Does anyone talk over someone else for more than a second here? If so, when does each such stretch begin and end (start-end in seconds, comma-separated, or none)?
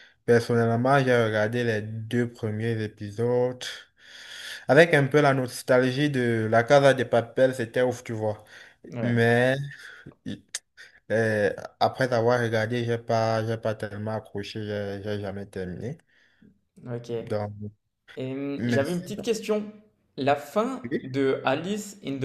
none